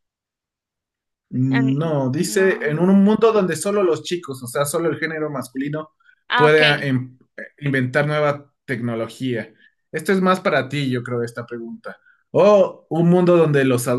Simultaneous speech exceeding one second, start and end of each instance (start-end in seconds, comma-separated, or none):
1.5-2.9